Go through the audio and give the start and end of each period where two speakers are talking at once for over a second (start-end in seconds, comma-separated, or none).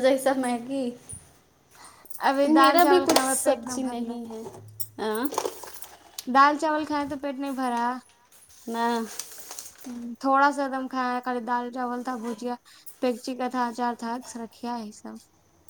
2.6-4.2